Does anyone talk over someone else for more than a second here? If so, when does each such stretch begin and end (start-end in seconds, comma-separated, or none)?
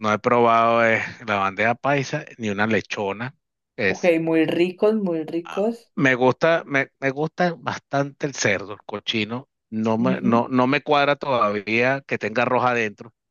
none